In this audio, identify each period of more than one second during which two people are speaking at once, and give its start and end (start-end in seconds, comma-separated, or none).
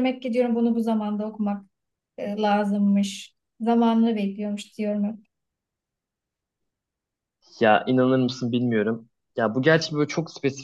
none